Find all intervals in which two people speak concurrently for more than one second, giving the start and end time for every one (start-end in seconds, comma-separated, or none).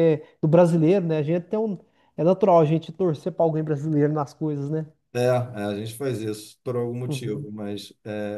none